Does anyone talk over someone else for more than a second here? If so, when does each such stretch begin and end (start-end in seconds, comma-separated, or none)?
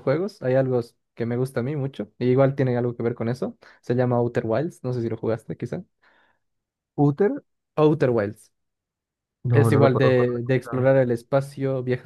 9.5-10.9